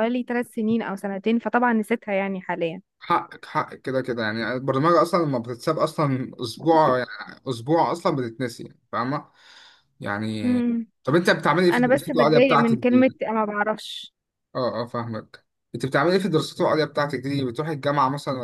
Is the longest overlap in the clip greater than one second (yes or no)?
yes